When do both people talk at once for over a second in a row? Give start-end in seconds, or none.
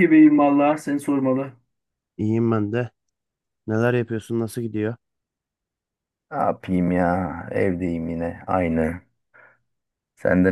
none